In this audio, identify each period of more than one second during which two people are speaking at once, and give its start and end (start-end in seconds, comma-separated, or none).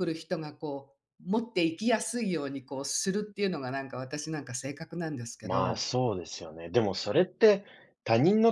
none